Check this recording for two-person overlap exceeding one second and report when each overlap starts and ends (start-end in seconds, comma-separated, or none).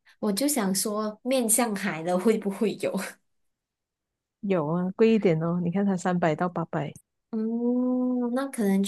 none